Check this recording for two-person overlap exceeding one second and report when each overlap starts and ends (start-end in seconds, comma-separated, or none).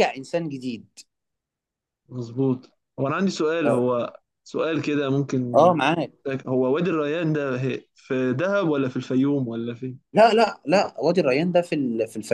none